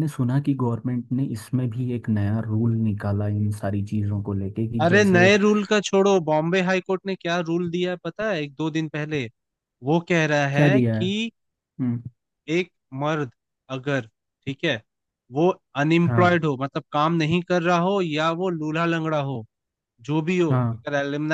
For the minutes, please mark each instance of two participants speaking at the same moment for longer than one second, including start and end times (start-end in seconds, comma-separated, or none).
none